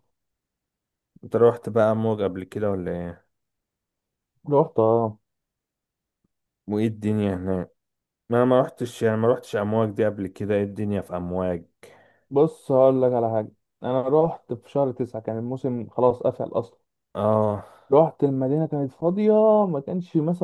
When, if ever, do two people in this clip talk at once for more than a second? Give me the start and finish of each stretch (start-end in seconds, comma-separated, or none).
none